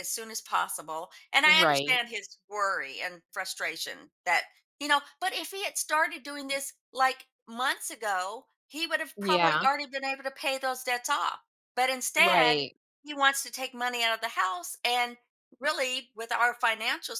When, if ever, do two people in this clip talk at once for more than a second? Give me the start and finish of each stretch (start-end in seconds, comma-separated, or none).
none